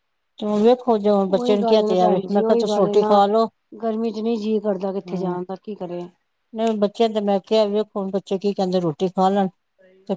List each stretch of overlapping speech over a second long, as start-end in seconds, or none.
1.4-3.2